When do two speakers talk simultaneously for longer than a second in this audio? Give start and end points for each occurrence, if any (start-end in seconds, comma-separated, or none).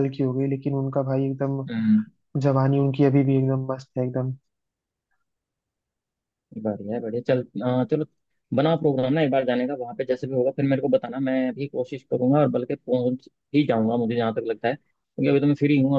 none